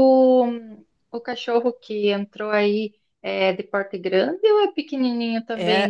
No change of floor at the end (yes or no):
no